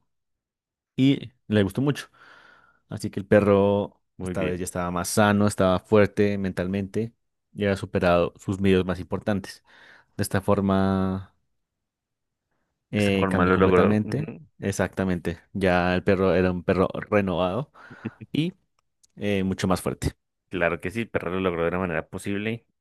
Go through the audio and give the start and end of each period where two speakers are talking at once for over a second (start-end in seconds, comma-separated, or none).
12.9-14.2